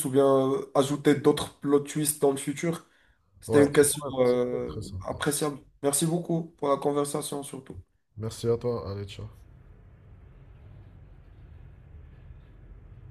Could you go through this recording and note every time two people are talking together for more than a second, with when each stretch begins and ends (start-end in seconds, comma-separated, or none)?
3.5-5.2